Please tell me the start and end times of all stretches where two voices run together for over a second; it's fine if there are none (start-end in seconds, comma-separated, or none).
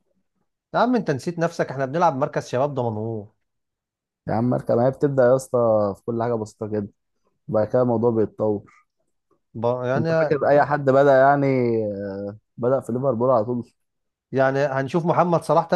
none